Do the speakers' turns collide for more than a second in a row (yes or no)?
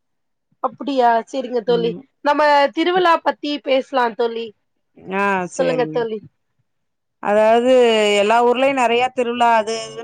no